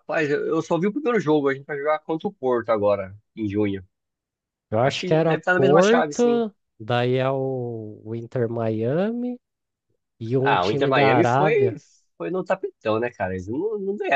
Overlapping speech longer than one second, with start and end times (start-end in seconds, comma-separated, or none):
4.8-6.4, 10.4-11.8